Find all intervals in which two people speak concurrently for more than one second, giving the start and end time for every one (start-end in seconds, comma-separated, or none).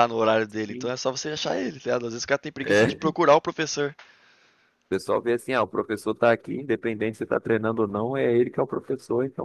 none